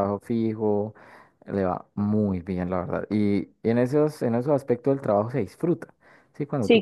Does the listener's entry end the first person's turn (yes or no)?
no